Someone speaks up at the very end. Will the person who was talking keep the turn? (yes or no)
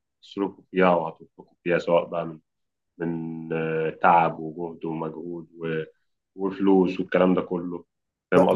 no